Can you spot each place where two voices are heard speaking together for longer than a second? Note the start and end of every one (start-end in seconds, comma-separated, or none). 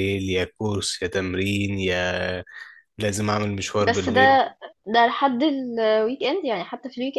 none